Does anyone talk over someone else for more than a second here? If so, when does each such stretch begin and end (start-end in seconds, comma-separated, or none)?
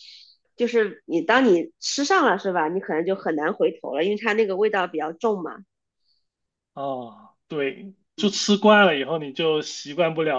none